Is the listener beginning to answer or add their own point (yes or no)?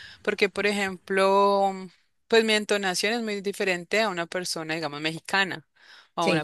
no